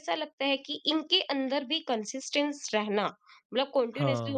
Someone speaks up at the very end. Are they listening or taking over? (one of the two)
listening